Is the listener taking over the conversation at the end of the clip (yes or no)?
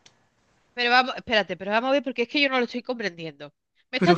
no